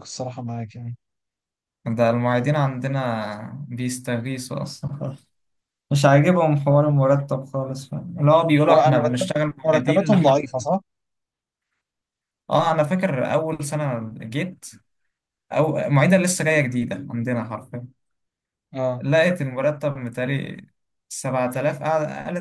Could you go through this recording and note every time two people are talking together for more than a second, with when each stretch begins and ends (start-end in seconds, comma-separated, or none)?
8.7-10.4